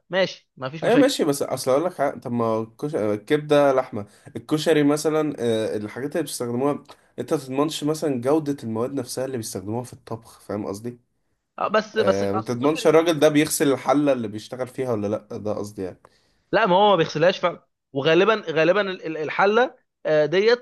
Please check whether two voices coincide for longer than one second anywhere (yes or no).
yes